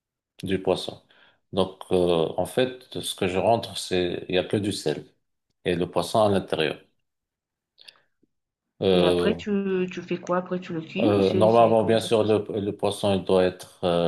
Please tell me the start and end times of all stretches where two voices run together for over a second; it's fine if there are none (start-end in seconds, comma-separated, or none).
11.0-12.4